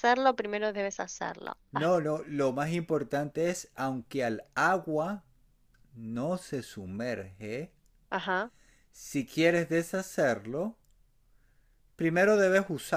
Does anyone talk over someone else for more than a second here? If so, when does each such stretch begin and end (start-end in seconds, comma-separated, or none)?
none